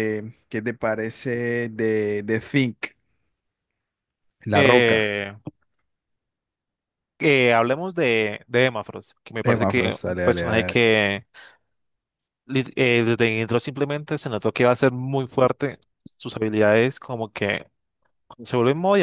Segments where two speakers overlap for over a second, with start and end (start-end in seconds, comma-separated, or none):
9.4-10.8